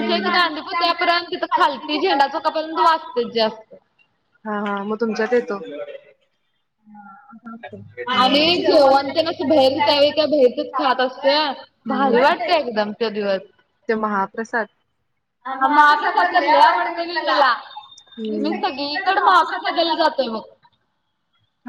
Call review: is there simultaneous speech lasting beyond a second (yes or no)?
yes